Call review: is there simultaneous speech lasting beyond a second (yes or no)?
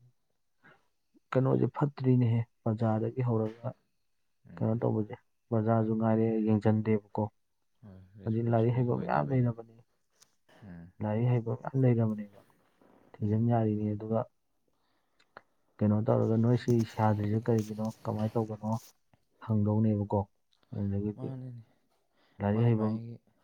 yes